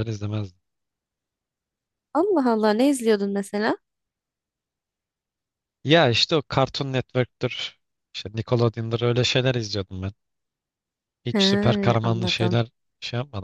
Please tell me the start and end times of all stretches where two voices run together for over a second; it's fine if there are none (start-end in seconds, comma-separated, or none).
11.3-12.6